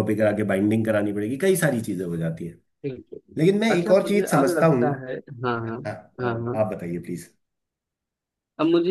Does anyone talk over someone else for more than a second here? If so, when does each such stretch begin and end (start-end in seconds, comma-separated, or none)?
3.4-4.9